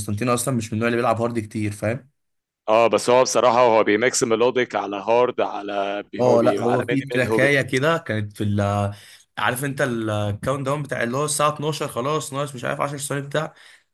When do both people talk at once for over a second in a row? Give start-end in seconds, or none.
6.2-7.5